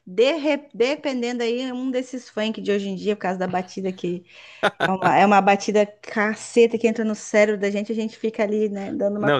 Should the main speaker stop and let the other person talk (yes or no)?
yes